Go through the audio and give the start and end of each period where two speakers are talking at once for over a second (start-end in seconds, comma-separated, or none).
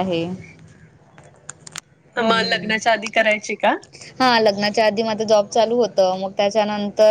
none